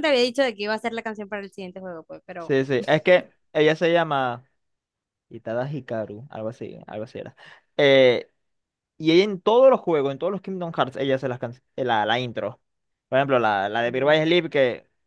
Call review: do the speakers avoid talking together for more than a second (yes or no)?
yes